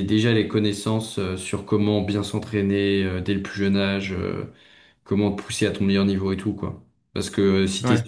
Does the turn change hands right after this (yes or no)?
no